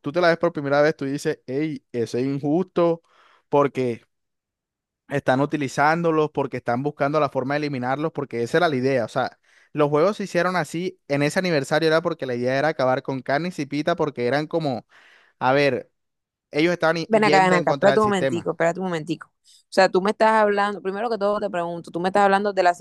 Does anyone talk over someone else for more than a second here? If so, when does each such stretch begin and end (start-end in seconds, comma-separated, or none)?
17.1-18.5